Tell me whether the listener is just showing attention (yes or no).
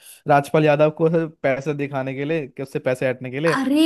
yes